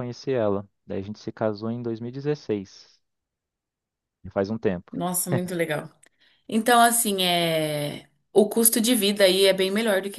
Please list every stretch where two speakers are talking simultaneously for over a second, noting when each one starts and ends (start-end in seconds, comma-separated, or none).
none